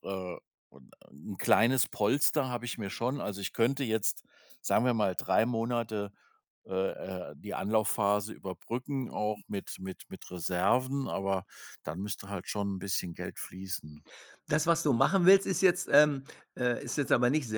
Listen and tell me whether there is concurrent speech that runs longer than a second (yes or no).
no